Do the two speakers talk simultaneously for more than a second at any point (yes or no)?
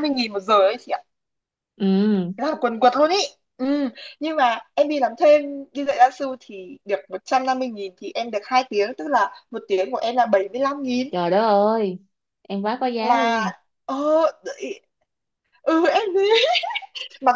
no